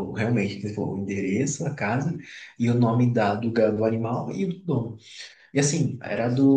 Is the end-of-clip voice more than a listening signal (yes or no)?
no